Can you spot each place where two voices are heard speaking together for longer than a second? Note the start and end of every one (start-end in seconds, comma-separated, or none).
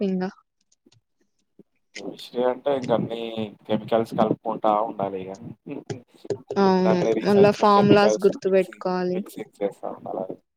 6.8-9.2